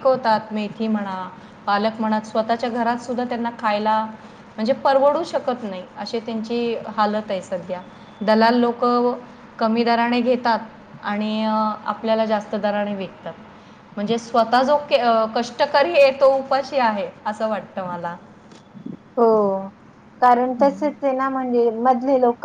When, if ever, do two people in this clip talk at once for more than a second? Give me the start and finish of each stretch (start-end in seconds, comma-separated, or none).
none